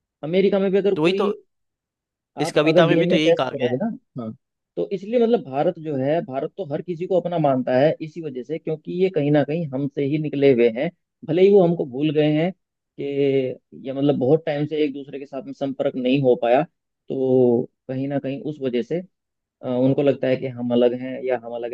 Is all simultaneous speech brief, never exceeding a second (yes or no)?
no